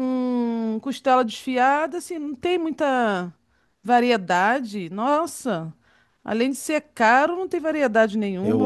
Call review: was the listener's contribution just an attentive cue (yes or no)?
no